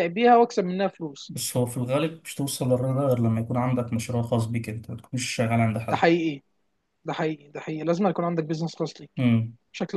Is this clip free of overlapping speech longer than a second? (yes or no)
yes